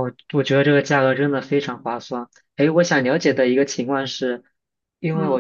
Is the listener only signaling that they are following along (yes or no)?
yes